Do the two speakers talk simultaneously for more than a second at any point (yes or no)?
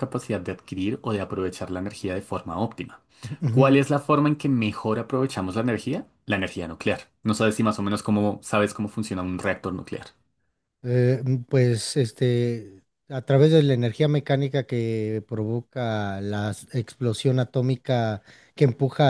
no